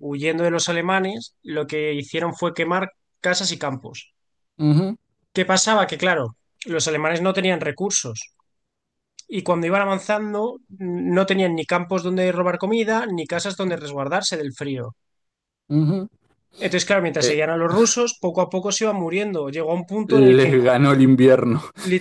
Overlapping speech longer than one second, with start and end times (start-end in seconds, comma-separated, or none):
none